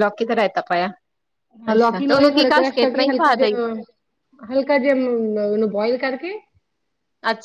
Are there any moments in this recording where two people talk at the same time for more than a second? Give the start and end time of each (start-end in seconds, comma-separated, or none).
1.8-3.5